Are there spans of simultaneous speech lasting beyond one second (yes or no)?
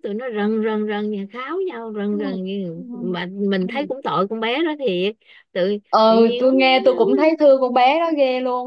no